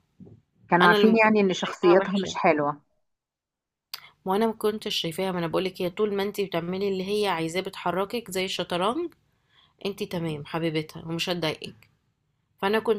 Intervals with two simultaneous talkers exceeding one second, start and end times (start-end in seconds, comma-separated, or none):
0.8-2.4